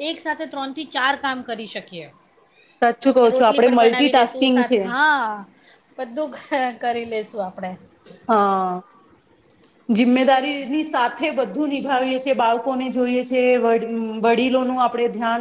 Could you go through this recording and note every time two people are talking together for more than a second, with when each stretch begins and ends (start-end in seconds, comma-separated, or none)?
3.2-4.8